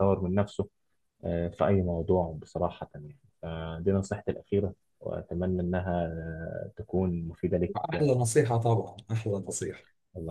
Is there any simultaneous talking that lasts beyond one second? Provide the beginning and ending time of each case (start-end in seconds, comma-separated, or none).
none